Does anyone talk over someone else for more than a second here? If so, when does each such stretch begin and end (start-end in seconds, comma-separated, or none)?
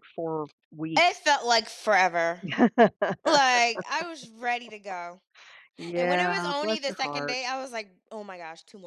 6.0-7.5